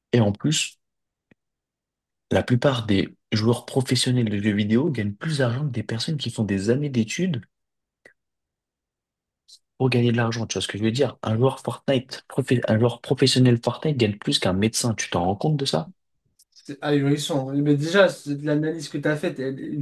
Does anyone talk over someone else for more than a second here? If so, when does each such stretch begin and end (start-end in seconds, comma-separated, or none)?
none